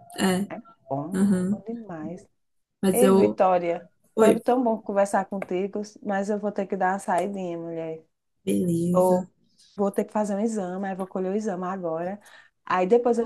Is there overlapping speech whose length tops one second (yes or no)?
no